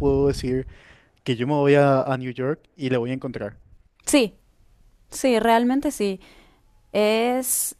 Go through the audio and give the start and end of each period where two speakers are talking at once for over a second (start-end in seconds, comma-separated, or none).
none